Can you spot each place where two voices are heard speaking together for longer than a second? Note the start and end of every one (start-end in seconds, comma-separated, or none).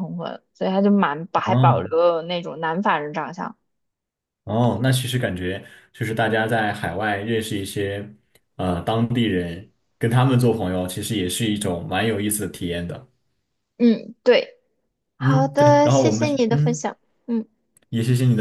15.2-16.8